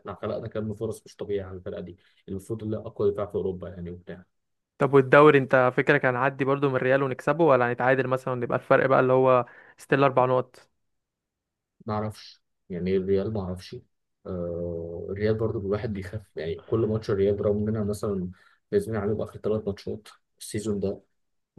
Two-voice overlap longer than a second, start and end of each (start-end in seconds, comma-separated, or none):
none